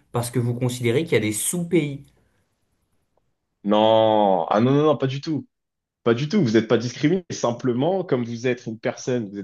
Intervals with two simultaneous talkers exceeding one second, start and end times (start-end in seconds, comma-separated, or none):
none